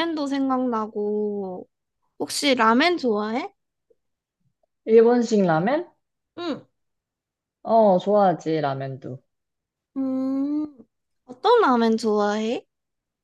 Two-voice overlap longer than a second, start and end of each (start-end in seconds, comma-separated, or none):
none